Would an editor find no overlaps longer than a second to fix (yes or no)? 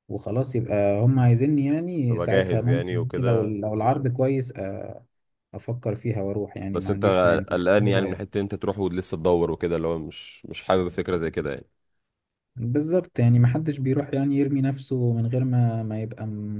no